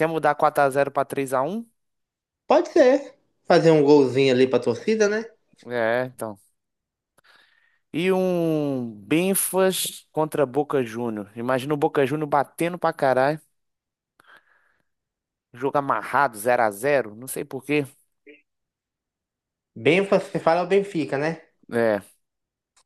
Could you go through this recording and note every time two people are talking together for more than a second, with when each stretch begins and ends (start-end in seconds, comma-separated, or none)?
none